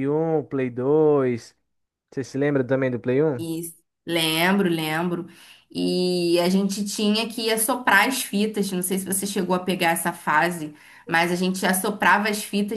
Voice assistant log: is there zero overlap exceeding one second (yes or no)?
yes